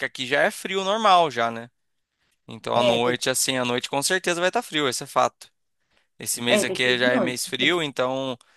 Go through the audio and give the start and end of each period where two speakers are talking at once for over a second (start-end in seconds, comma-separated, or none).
6.5-7.8